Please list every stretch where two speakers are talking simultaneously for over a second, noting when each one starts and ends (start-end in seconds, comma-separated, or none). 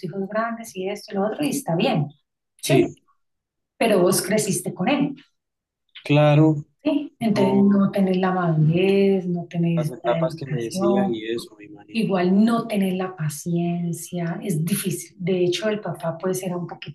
9.7-11.2